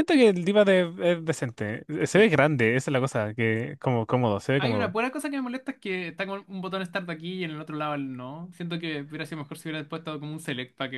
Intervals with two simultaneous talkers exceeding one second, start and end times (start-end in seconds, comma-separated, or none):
none